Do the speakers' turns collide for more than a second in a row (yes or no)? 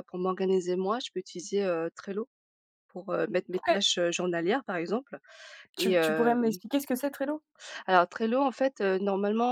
no